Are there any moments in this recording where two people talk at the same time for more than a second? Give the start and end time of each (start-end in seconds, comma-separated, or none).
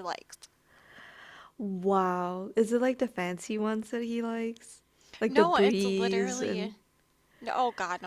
5.2-6.7